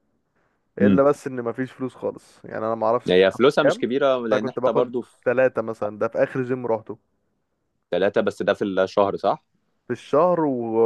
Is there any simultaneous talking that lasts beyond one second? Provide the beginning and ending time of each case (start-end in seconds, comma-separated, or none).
3.1-4.9